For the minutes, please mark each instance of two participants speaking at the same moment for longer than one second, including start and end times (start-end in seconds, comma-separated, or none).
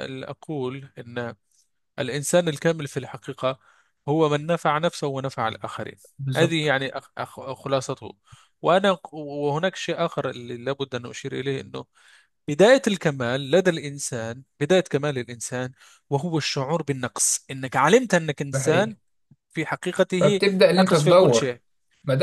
20.2-21.6